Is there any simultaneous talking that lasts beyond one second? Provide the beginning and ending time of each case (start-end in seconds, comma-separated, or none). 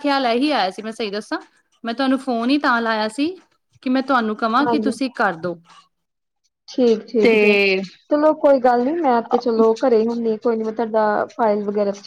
none